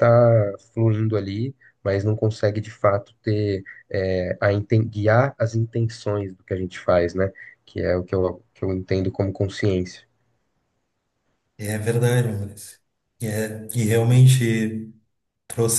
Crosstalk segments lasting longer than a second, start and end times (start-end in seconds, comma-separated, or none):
none